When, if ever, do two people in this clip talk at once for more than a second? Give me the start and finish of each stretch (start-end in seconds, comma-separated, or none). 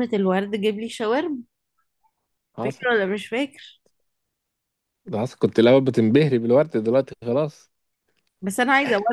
none